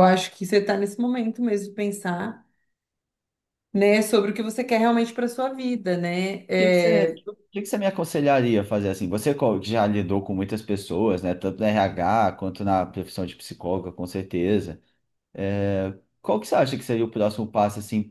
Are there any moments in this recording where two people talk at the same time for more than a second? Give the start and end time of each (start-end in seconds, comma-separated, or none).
none